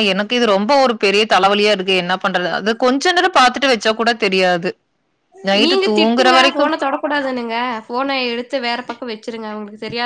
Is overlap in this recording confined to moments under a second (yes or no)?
yes